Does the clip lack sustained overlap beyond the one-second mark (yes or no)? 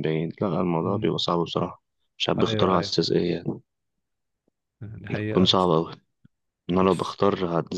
yes